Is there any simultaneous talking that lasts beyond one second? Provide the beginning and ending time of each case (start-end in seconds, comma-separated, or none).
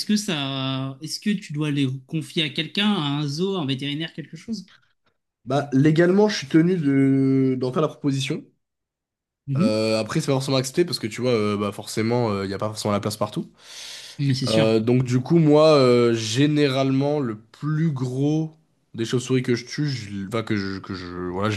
none